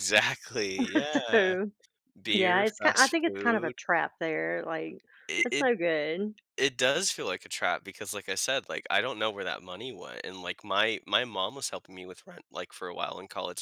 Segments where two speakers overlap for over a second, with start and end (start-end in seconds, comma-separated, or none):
2.3-3.7